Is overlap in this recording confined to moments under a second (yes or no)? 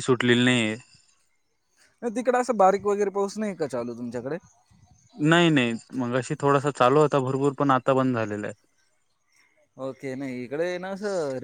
yes